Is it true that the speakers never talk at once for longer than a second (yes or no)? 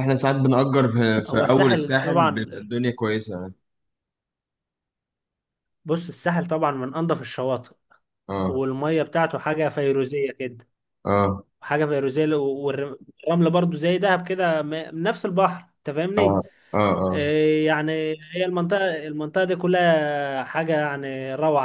no